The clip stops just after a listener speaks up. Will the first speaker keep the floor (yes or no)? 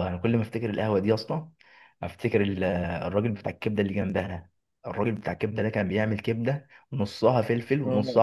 yes